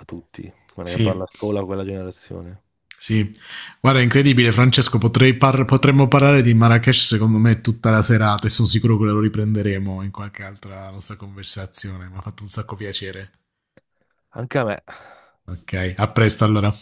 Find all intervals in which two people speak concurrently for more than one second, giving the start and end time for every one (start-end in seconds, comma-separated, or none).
none